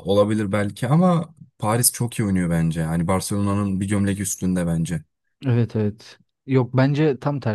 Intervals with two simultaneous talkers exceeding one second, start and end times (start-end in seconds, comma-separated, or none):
none